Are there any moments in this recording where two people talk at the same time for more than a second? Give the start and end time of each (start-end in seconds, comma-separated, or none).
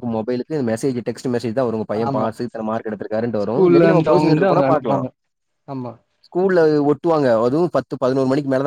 3.4-5.0